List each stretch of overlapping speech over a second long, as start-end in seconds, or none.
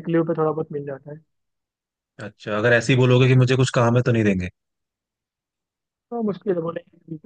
none